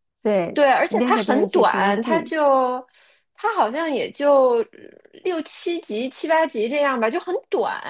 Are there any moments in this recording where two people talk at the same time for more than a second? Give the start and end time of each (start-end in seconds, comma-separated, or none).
0.5-2.3